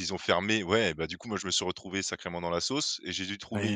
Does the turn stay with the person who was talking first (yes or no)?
yes